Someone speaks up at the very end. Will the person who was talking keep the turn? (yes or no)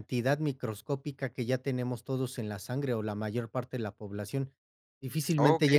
no